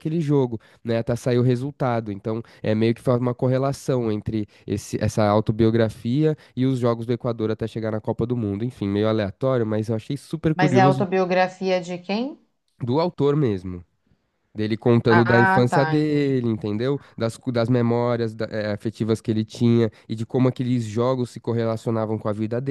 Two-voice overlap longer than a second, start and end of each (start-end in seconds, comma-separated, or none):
15.1-16.4